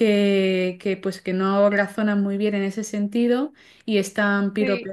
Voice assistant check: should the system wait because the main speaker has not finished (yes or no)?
yes